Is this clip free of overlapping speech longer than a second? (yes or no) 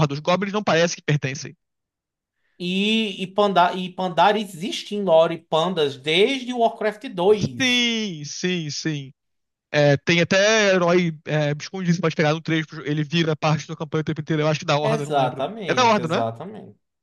no